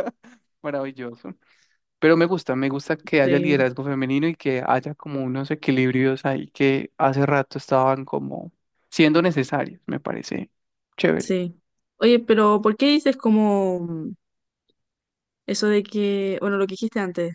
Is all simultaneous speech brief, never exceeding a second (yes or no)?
yes